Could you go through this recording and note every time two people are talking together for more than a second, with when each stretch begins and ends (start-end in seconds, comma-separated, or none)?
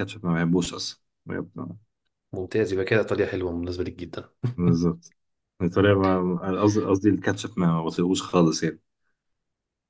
none